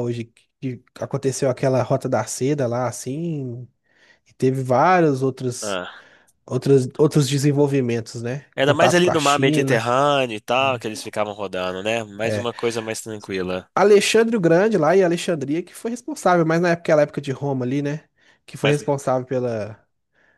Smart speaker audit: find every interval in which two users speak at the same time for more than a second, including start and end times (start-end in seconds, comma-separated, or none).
8.5-9.9